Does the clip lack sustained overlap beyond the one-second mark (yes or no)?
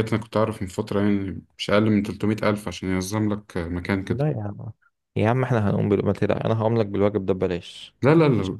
yes